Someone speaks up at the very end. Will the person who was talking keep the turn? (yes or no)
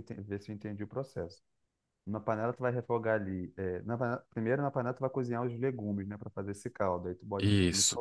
yes